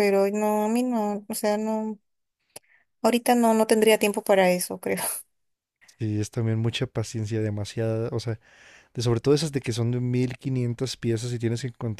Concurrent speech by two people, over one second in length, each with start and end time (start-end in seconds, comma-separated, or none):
none